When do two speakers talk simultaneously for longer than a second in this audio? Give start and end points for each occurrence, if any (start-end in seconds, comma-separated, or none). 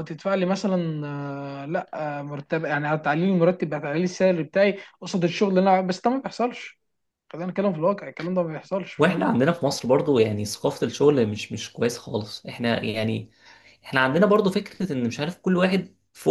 none